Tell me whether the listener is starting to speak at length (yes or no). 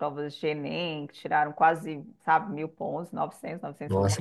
yes